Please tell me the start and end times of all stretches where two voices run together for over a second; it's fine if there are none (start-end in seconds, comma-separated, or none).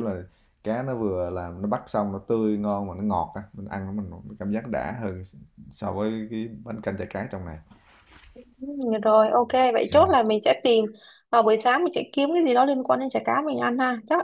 none